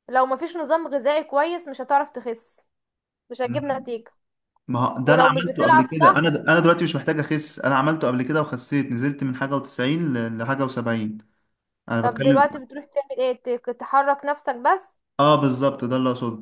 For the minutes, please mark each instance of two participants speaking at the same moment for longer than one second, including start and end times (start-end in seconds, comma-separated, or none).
5.0-6.4